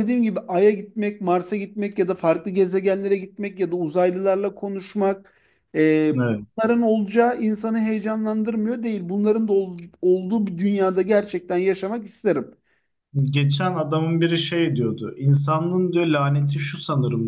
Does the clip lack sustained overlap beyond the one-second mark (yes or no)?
yes